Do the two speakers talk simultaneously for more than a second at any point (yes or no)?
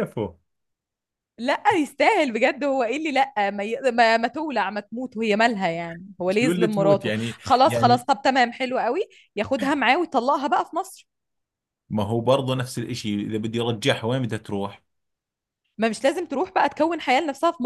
yes